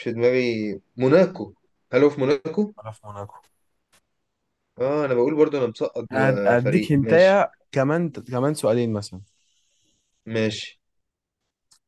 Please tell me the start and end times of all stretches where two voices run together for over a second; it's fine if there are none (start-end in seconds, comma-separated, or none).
6.1-7.4